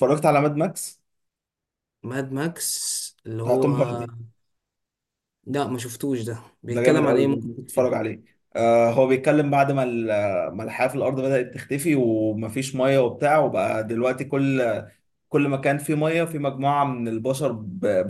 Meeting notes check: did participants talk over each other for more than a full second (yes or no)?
yes